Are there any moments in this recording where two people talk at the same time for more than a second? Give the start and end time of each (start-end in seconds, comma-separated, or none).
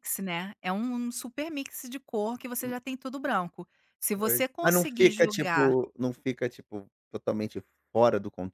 4.1-5.8